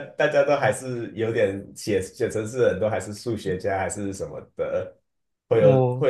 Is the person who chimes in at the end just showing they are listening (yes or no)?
yes